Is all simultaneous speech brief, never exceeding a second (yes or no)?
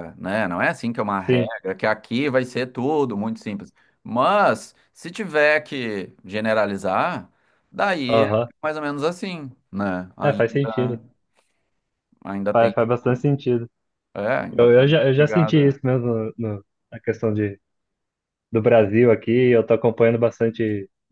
no